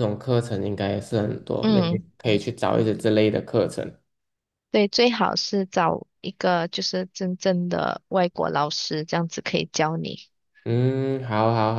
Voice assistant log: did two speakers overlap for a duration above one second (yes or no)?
no